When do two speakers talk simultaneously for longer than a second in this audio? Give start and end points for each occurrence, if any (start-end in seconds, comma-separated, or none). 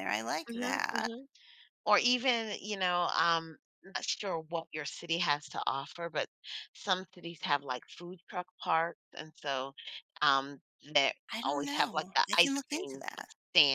11.3-13.0